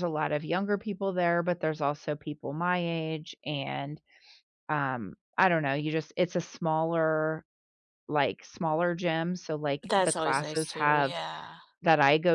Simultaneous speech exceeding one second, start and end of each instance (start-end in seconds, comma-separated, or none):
9.8-11.1